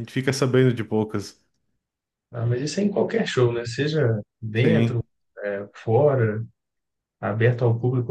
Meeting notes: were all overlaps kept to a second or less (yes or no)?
yes